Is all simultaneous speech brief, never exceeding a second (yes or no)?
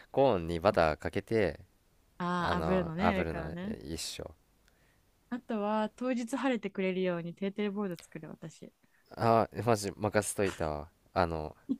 no